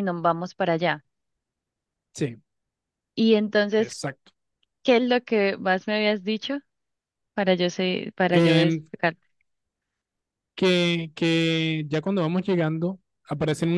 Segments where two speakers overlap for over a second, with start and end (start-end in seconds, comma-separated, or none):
none